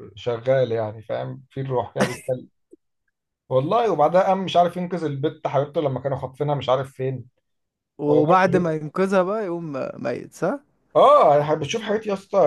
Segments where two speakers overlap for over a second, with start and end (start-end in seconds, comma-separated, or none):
none